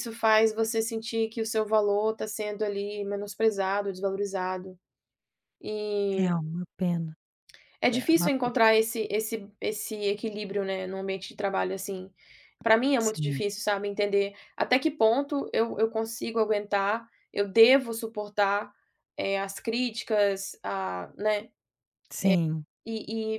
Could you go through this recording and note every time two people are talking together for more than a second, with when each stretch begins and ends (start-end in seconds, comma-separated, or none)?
none